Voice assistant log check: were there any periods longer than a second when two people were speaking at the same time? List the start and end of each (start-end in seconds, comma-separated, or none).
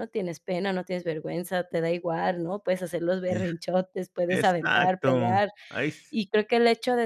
4.3-5.5